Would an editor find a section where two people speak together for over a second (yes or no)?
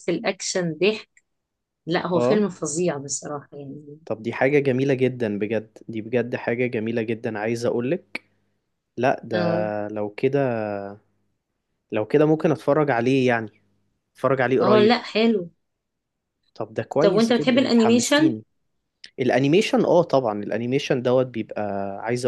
yes